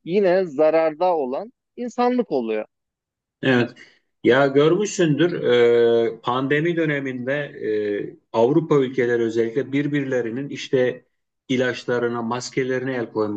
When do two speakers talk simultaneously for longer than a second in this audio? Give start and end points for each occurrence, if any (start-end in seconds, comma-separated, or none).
none